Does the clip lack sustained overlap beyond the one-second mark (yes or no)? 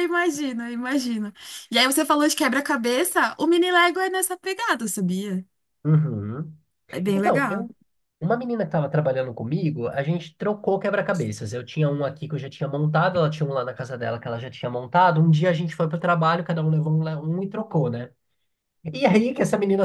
yes